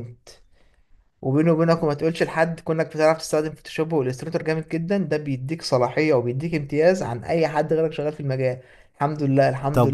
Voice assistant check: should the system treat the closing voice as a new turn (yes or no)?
no